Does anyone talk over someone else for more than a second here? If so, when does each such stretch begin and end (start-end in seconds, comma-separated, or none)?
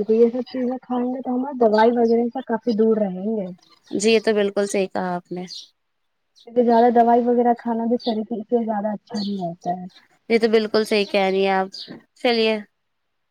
none